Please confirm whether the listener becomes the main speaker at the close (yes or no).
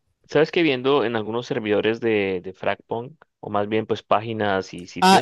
yes